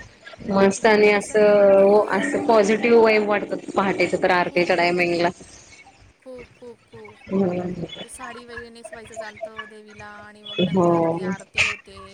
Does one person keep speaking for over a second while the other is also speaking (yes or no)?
yes